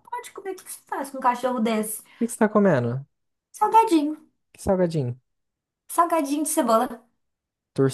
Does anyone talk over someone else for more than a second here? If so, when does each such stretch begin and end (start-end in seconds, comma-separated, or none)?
none